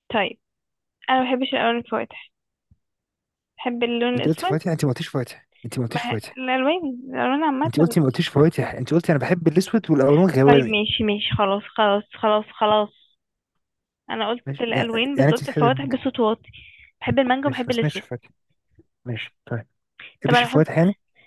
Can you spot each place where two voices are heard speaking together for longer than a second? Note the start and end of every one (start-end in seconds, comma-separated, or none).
14.5-16.0